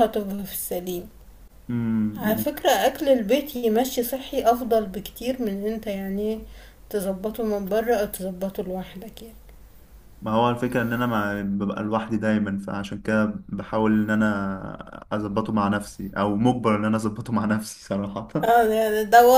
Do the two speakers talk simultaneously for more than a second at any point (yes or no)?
no